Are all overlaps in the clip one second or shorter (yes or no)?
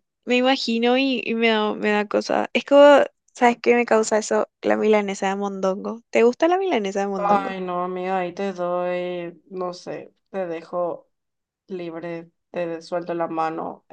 yes